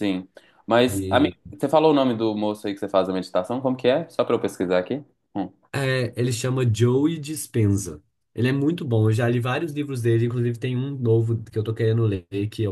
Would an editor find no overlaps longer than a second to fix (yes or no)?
yes